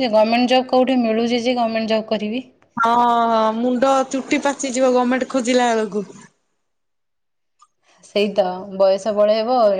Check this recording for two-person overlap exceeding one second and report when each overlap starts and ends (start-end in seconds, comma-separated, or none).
none